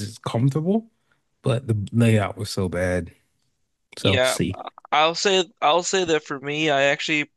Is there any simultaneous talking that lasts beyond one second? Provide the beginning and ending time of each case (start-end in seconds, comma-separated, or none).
none